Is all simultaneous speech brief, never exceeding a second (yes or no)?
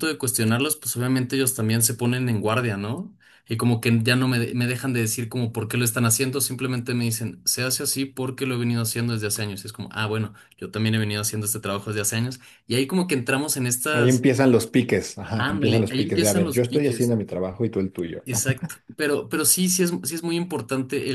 no